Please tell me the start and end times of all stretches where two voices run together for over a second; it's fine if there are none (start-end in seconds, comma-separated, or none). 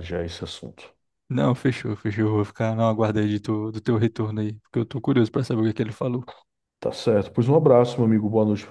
none